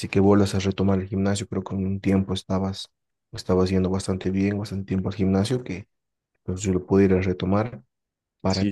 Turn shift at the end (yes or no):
no